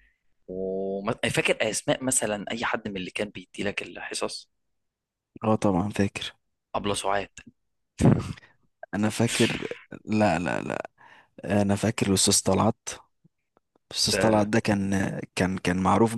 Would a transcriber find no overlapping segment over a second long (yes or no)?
yes